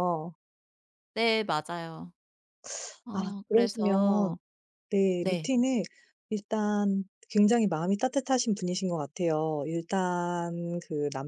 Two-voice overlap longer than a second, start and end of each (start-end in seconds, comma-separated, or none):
3.1-4.4